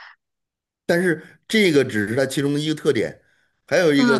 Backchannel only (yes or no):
yes